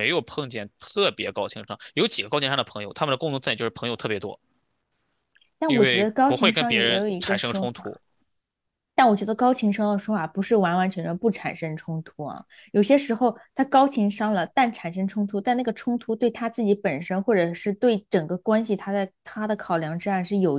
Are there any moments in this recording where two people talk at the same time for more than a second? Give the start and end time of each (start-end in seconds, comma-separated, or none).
5.7-8.0